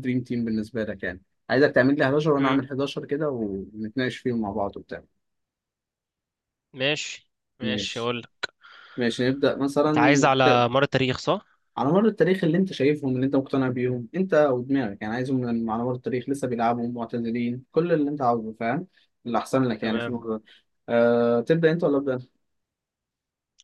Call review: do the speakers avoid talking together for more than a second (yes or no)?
yes